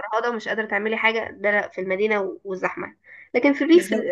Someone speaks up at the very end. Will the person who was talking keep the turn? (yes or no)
yes